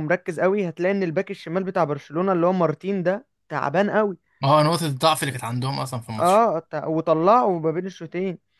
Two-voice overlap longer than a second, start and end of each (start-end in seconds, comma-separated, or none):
none